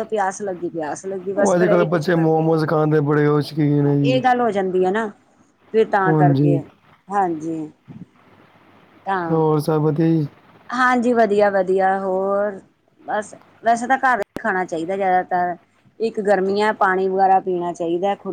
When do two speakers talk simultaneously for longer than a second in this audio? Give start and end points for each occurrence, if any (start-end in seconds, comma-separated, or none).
1.4-2.8